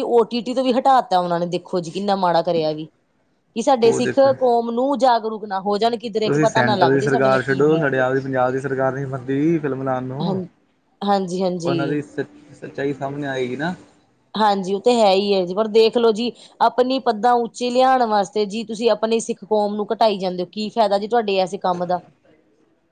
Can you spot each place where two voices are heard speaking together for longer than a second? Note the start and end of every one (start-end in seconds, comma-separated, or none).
6.2-8.0